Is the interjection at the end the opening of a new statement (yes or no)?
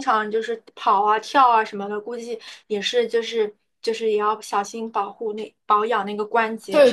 yes